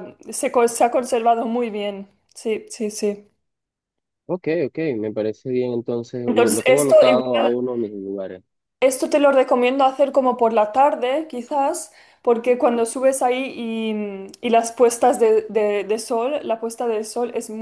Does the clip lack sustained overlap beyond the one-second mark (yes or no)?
no